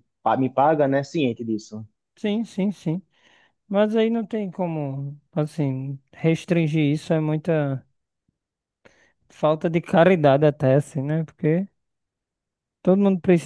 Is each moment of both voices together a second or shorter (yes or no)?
yes